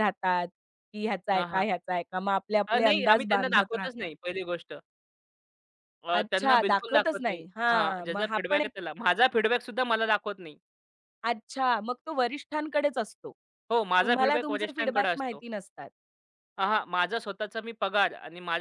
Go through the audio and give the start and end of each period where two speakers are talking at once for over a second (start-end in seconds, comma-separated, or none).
2.7-4.1, 6.2-8.7, 14.0-15.4